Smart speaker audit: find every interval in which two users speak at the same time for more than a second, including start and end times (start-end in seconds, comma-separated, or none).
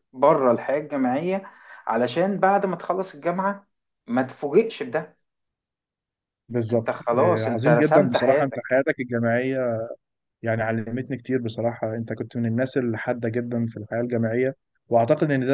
6.7-8.8